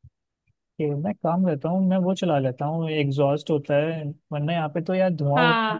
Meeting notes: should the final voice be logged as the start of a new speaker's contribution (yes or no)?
yes